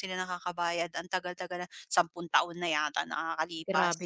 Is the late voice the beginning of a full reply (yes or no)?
yes